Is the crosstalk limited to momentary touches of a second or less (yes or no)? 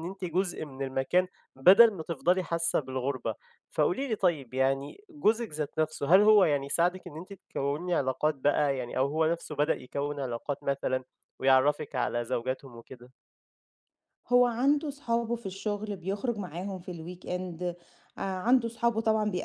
yes